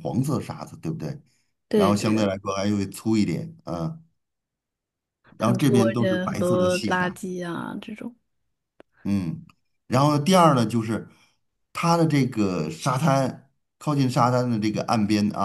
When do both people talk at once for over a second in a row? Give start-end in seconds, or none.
5.4-7.2